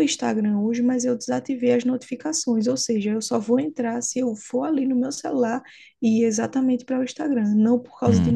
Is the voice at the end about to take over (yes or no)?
no